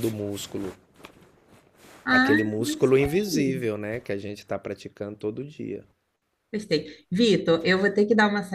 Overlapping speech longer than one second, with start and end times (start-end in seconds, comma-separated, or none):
2.1-3.7